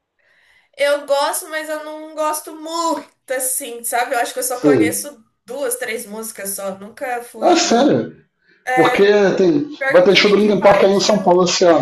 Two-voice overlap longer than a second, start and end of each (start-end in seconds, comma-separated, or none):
9.8-11.3